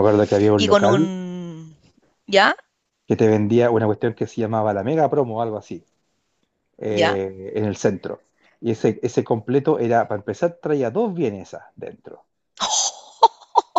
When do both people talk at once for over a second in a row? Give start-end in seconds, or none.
none